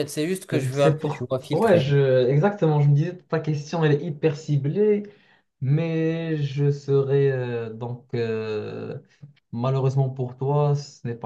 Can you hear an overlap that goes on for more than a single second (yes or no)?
yes